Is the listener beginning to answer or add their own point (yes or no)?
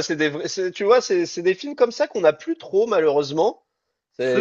no